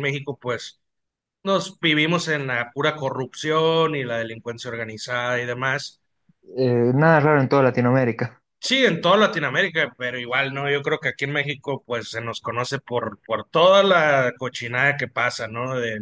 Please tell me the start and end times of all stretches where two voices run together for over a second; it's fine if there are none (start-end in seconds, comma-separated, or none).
none